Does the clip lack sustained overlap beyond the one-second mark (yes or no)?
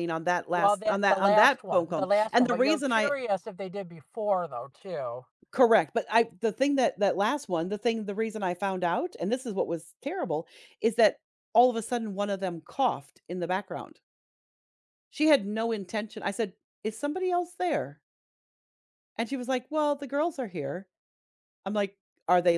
no